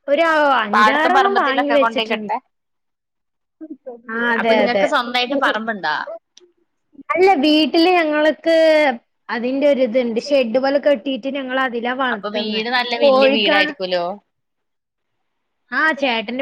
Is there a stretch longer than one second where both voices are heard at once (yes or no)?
yes